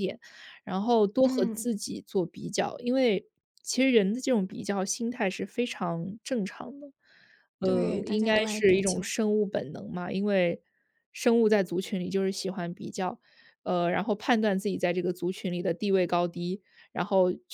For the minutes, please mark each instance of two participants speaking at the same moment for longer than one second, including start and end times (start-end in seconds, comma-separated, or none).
7.6-9.1